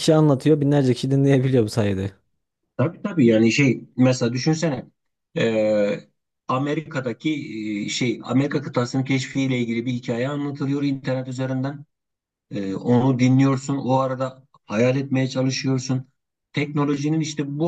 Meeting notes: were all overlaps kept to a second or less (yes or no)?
yes